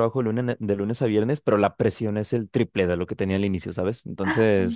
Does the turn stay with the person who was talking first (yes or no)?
yes